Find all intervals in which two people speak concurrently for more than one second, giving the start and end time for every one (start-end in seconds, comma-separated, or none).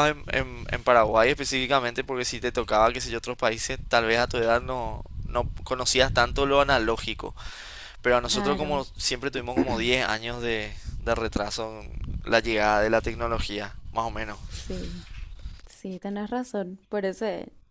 none